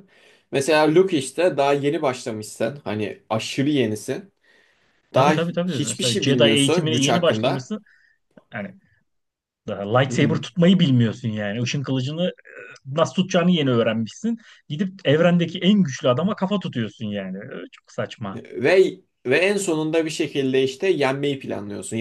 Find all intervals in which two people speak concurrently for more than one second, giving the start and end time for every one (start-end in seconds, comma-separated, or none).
5.1-7.7